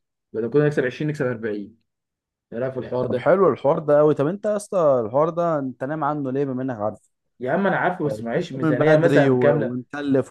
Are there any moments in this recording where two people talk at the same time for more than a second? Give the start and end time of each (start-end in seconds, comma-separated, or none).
8.0-9.8